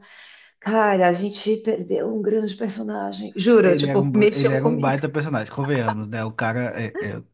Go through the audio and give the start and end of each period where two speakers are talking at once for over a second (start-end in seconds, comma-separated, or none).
3.6-5.0